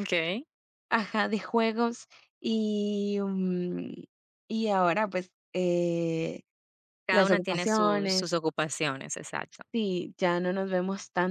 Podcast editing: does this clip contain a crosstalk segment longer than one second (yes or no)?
yes